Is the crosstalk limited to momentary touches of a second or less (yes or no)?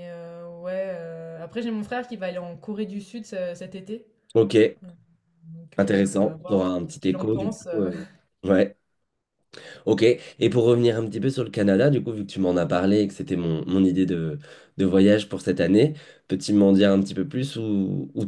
no